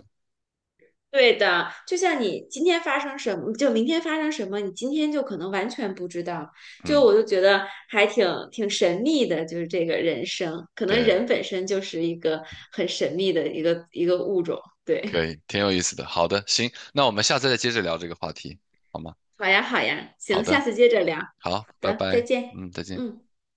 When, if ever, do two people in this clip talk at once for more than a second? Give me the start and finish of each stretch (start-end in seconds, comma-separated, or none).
21.4-23.0